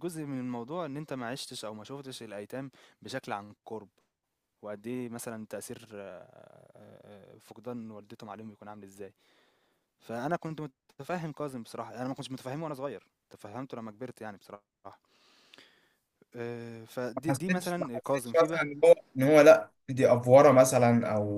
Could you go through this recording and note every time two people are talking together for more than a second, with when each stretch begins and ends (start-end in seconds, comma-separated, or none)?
17.2-18.6